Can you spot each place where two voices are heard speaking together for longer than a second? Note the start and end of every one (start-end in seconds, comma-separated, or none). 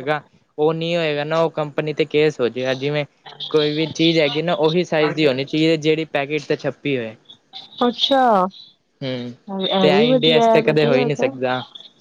9.8-11.3